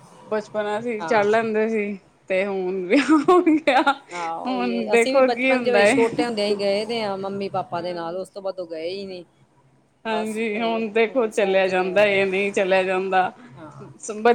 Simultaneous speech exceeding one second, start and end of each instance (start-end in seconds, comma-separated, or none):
4.1-5.9